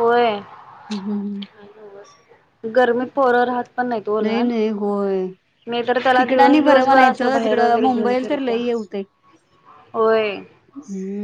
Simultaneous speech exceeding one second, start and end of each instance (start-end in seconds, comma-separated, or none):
6.2-8.6